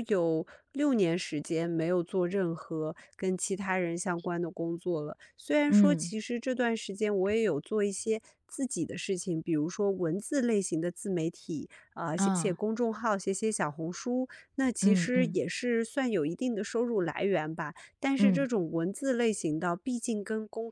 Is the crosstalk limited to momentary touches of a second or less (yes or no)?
yes